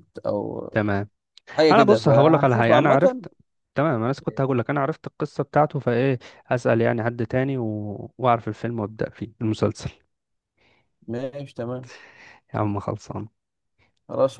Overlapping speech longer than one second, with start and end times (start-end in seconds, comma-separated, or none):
1.7-3.2